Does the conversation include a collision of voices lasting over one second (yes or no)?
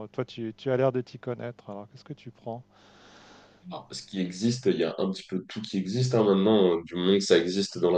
no